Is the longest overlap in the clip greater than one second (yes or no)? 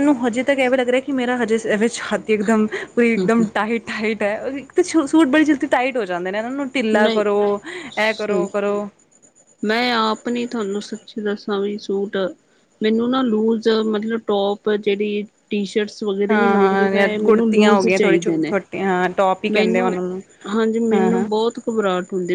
yes